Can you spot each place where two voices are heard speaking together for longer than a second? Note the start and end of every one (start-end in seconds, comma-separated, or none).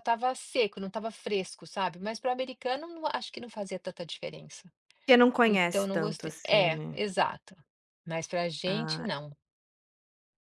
5.5-7.0